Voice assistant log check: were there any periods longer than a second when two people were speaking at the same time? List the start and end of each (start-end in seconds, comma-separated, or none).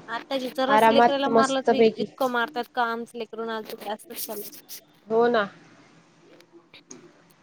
0.8-2.0